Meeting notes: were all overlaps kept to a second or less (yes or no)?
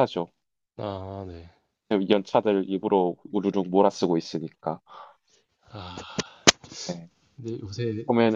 yes